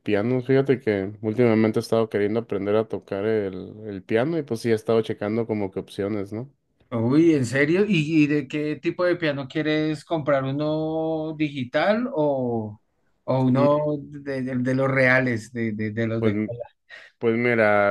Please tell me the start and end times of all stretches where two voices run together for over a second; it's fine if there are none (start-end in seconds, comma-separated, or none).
none